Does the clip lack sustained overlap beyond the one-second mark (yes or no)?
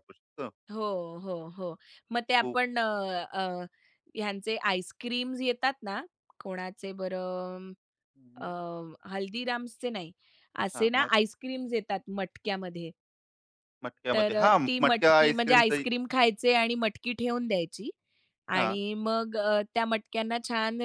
no